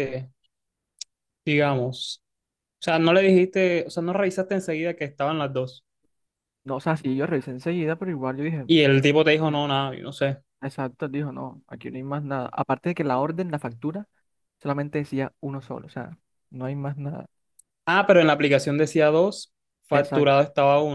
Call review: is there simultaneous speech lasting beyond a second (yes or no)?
no